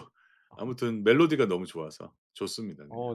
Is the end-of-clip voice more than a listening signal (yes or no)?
yes